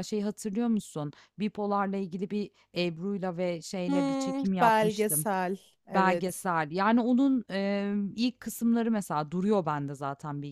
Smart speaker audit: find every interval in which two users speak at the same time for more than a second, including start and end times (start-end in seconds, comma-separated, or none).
3.9-5.3